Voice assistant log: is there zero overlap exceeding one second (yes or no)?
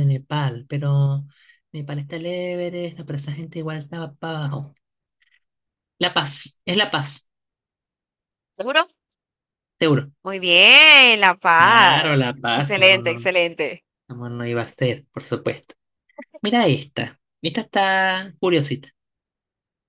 no